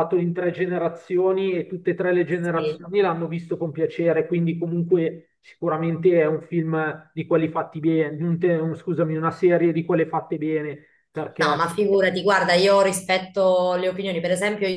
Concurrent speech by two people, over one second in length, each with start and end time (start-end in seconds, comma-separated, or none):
none